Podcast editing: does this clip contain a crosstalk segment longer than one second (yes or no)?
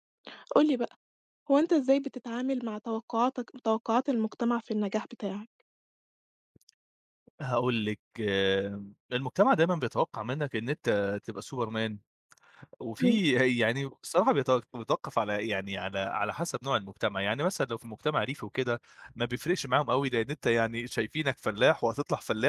no